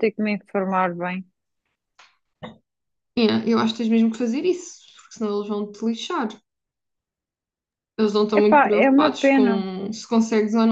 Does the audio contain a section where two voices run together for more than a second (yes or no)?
yes